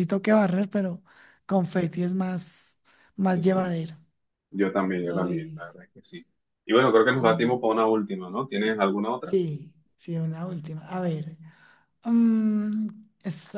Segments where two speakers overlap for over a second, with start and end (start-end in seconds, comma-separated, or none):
none